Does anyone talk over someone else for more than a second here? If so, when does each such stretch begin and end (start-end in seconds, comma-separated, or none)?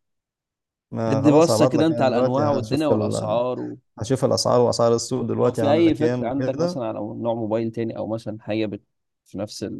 1.1-3.4, 5.3-6.8